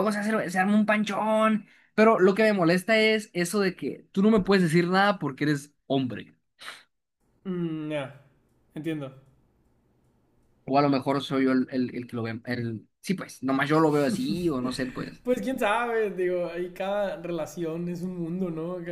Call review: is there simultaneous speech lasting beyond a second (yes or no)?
no